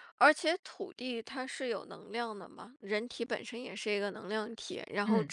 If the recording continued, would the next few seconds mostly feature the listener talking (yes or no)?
no